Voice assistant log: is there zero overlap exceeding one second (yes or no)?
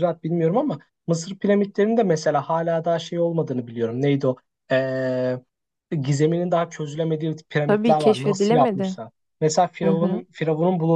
no